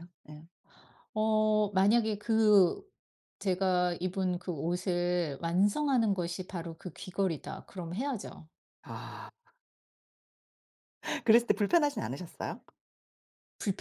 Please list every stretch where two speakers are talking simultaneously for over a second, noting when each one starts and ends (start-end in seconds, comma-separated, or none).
none